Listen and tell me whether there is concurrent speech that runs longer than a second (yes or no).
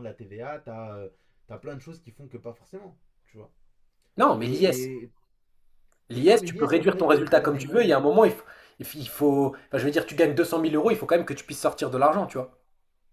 yes